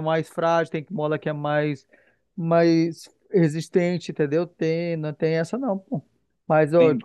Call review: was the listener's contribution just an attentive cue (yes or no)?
yes